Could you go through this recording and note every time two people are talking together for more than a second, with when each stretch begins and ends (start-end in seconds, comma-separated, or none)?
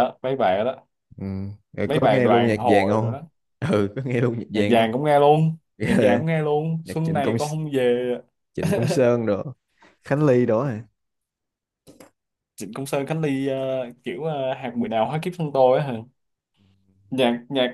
1.9-3.1